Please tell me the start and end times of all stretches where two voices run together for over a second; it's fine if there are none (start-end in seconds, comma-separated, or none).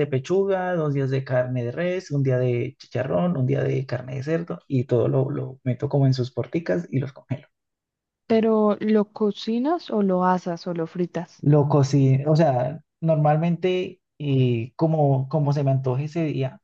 none